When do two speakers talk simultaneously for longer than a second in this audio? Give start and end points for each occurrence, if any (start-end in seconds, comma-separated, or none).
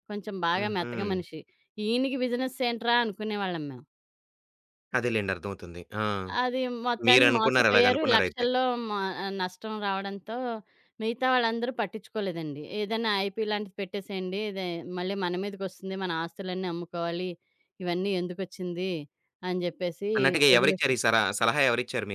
7.1-8.5